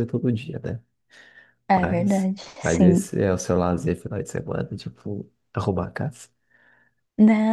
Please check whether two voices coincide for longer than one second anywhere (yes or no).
yes